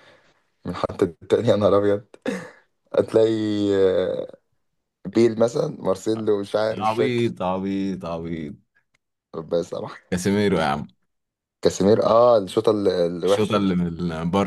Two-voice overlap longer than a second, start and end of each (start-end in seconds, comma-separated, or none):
none